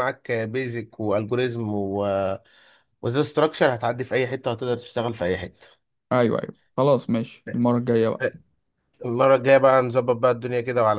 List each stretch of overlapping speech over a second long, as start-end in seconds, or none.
none